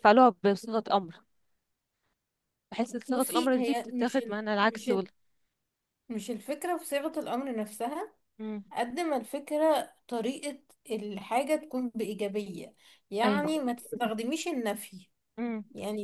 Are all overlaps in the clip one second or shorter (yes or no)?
no